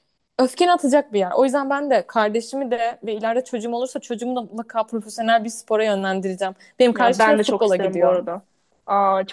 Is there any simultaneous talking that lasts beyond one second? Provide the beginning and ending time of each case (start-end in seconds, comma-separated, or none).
6.9-8.2